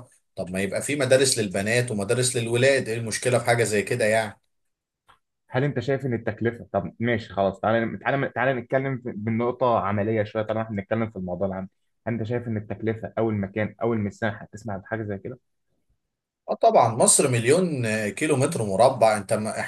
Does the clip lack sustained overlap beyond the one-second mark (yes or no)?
yes